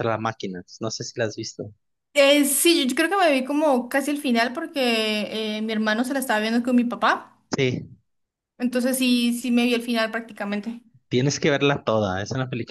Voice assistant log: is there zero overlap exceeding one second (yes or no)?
yes